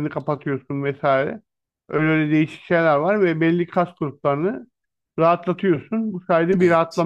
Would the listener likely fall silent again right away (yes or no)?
yes